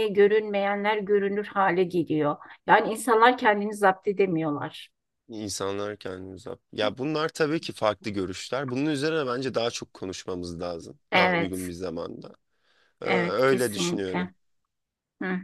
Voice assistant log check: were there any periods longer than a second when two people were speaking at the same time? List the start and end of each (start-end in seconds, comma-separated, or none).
13.1-14.3